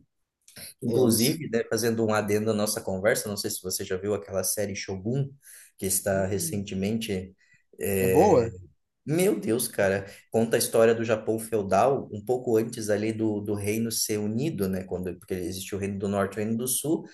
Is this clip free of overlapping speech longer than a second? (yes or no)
yes